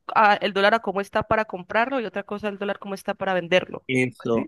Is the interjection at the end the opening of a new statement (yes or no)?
yes